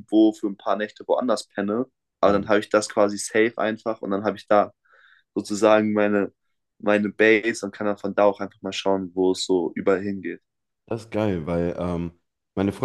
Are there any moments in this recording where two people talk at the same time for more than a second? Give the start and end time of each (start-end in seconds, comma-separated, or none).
none